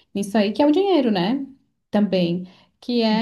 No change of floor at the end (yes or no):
yes